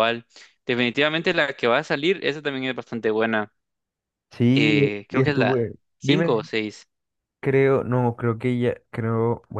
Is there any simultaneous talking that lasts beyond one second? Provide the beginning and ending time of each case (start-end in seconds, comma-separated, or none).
4.5-6.5